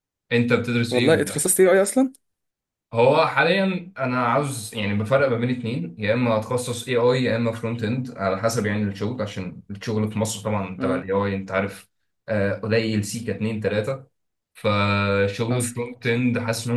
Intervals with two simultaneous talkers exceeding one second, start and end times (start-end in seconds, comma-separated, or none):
none